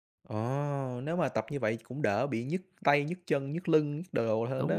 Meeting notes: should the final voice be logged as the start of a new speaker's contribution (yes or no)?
yes